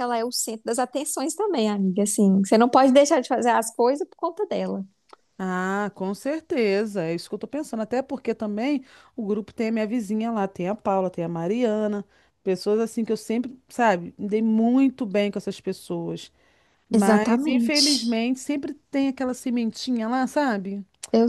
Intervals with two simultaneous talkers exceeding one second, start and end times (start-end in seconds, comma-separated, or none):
16.9-18.2